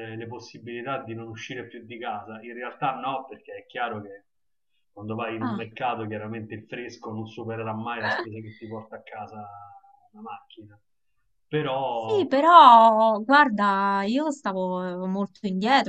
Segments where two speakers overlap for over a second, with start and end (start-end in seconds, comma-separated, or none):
none